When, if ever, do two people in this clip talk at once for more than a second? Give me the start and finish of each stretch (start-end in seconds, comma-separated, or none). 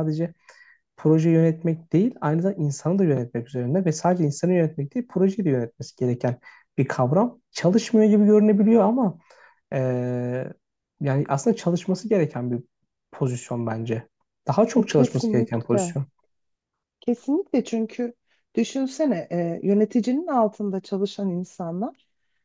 14.7-16.0